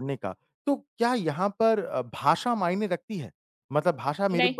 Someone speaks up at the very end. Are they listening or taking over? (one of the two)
listening